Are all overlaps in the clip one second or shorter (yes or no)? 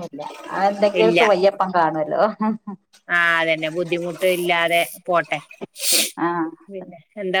yes